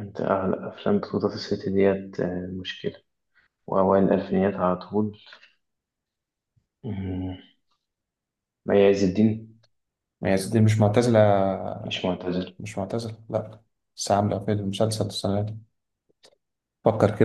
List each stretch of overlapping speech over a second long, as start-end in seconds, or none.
none